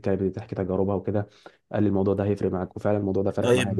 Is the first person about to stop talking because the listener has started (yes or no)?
yes